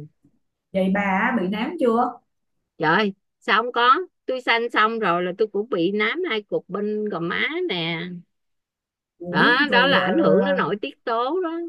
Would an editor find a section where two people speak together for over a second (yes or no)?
yes